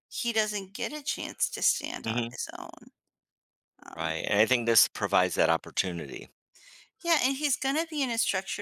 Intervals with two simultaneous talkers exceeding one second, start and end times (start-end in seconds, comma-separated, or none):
none